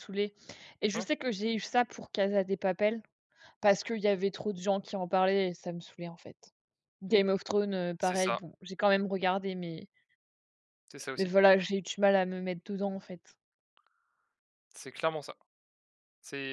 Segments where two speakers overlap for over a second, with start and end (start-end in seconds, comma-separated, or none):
none